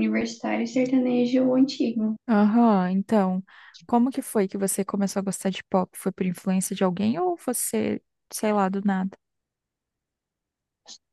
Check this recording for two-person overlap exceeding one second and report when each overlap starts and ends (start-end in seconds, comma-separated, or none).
none